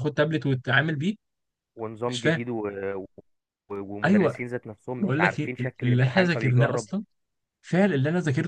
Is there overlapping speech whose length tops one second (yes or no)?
yes